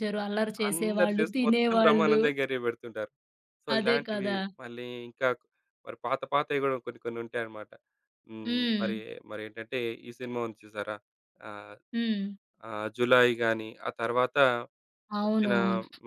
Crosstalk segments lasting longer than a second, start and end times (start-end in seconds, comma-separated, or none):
0.7-2.2